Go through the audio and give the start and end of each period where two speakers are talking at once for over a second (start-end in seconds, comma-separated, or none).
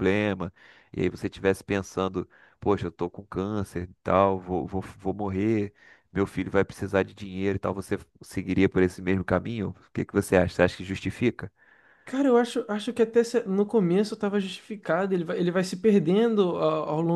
none